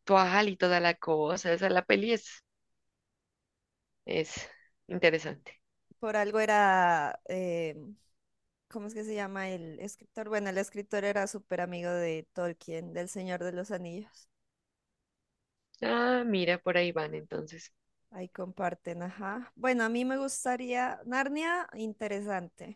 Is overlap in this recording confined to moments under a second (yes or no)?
yes